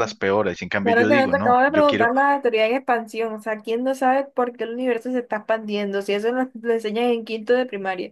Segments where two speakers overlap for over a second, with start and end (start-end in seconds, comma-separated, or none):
0.8-2.1